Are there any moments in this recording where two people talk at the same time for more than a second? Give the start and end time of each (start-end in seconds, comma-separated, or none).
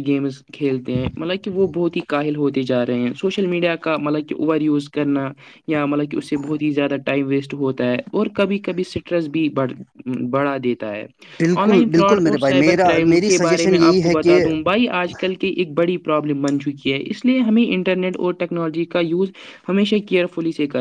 11.6-14.4